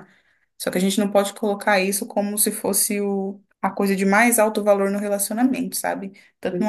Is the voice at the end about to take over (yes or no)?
no